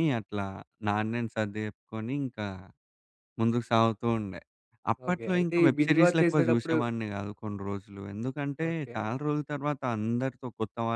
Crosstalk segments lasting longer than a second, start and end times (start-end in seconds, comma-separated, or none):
5.1-6.8